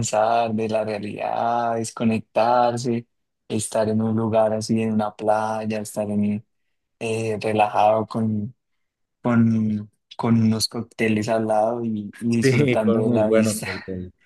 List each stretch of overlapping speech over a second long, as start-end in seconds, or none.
12.4-13.7